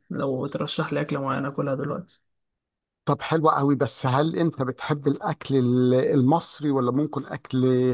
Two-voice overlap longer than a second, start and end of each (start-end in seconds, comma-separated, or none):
none